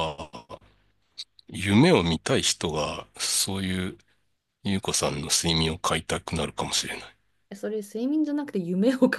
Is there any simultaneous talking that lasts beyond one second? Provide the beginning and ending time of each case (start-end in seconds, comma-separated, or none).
none